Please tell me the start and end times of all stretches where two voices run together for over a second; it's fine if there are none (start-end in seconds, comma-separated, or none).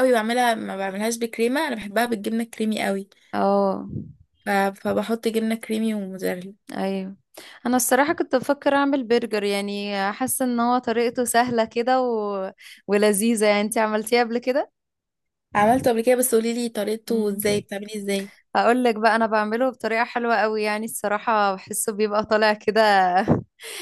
none